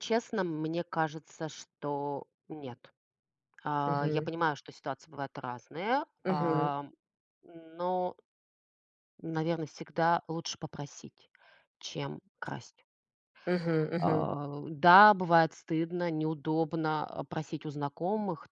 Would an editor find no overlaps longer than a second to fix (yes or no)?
yes